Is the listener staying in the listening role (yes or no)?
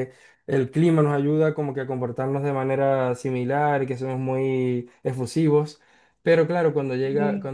yes